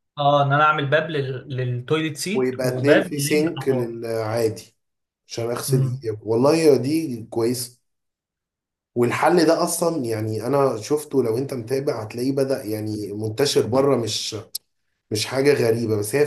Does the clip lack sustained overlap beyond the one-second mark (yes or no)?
no